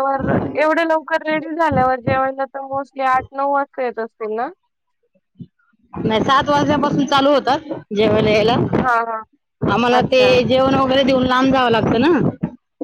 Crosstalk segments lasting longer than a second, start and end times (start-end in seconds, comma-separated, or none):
none